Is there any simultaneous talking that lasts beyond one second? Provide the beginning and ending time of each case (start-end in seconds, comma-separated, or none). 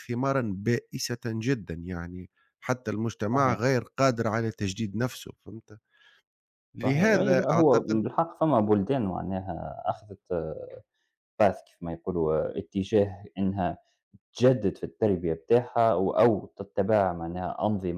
6.8-8.0